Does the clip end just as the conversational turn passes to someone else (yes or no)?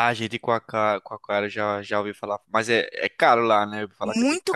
yes